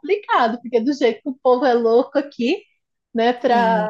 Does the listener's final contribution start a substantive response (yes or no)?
yes